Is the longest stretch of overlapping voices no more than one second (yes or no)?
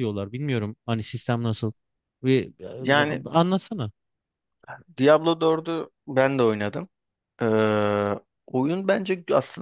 yes